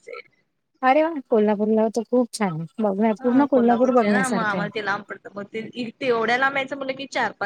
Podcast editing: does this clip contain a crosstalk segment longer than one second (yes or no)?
yes